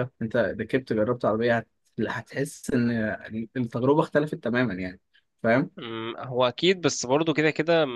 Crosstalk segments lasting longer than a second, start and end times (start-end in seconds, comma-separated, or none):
none